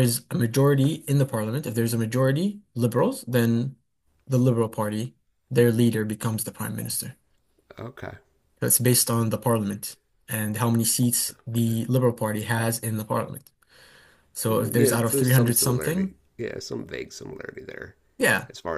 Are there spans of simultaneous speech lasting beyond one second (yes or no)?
yes